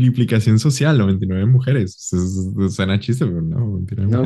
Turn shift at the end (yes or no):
yes